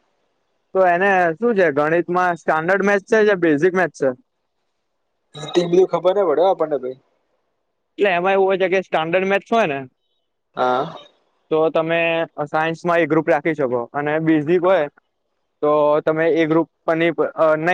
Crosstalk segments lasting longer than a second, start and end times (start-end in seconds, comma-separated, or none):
none